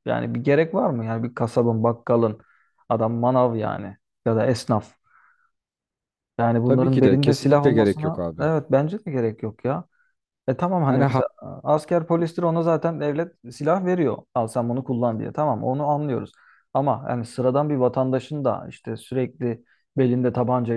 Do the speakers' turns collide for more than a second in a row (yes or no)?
yes